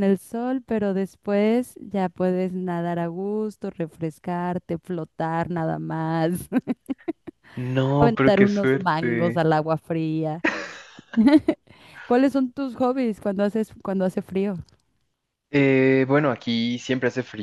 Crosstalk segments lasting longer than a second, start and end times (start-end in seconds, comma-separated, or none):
8.0-9.4